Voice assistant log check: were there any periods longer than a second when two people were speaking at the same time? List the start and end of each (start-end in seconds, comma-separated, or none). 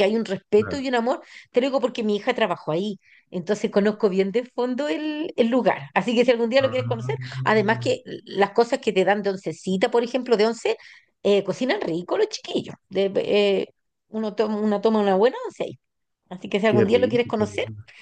6.6-7.9